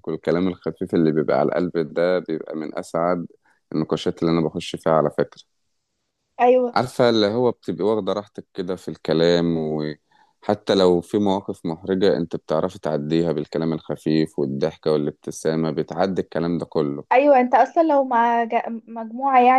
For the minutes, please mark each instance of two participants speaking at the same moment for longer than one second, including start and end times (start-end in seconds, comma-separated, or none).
none